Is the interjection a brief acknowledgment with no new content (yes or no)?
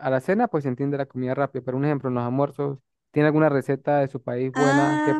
no